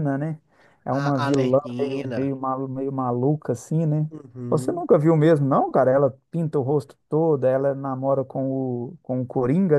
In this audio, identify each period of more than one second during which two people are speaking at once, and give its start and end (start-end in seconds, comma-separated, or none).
0.9-2.3